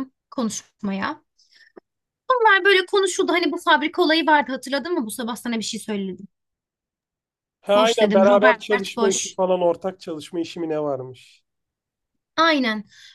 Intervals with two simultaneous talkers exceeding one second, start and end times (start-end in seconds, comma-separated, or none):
7.8-9.3